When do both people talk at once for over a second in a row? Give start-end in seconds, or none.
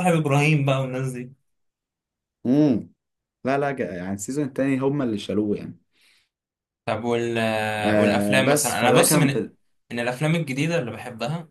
7.8-9.3